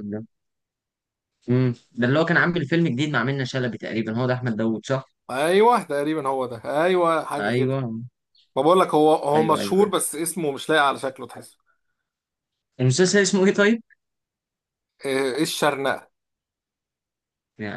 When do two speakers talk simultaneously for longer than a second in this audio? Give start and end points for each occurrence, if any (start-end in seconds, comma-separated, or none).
none